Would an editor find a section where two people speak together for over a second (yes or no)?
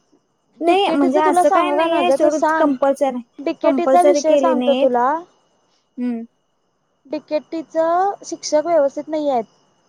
yes